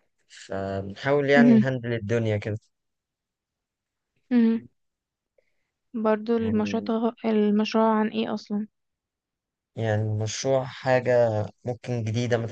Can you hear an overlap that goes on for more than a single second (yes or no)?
no